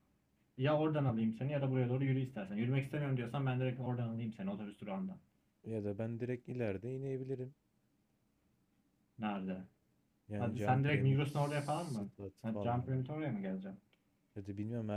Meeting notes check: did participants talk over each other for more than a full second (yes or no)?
yes